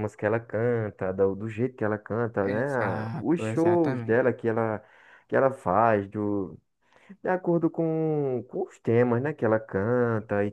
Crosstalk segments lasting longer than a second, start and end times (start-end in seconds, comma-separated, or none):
2.4-4.2